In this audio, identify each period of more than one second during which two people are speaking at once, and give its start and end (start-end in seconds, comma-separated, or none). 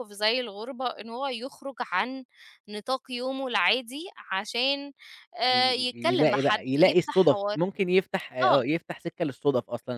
5.4-7.6